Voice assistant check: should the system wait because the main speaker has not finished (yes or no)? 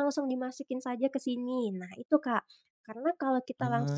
yes